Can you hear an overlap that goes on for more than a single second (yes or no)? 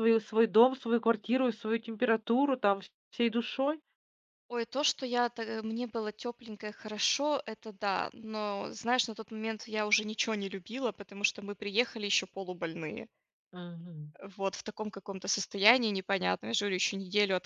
no